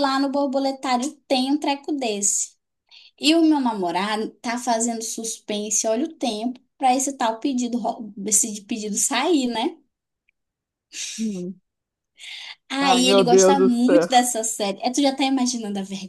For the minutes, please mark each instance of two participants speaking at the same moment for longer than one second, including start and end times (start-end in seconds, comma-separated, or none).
12.8-14.1